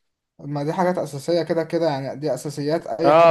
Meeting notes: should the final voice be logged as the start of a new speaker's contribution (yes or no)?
yes